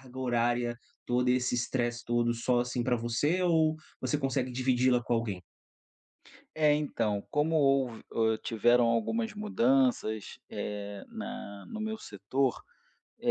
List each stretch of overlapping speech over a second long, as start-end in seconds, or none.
none